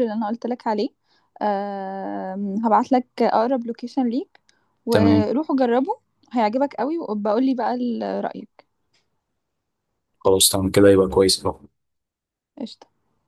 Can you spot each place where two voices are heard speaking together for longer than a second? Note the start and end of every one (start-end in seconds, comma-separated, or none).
none